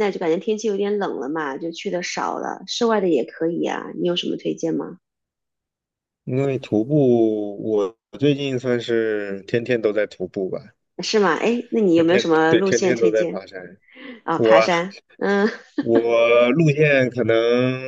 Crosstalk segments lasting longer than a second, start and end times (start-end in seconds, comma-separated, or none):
11.9-13.4